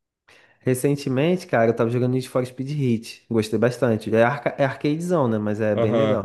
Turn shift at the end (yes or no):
yes